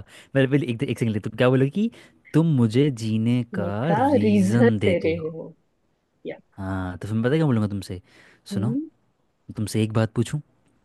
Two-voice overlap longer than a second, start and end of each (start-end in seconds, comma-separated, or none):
3.5-5.3